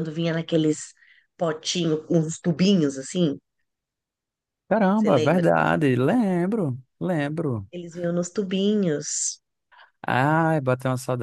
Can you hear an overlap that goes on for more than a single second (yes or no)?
yes